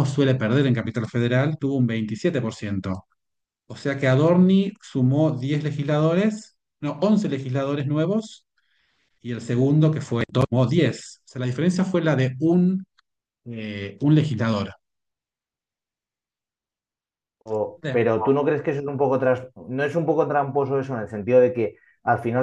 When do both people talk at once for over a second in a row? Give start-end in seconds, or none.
none